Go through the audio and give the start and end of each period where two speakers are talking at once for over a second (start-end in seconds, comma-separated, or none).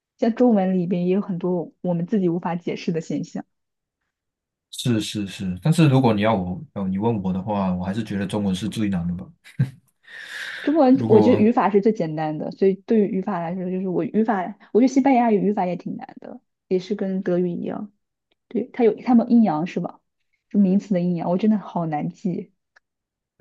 none